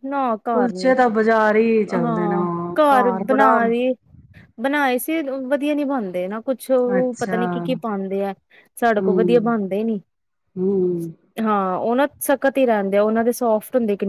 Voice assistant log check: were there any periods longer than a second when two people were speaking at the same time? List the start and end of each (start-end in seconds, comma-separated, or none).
none